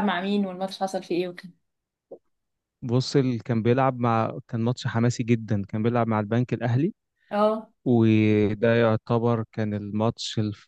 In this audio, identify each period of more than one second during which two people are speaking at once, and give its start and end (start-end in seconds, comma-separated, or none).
none